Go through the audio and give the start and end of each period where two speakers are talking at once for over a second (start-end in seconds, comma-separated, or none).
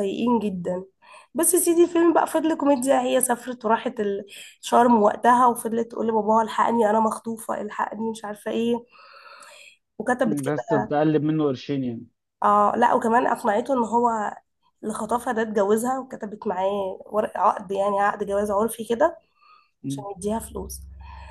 none